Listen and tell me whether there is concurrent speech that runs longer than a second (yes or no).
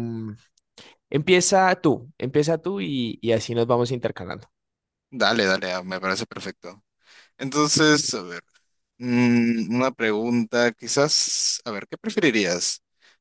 no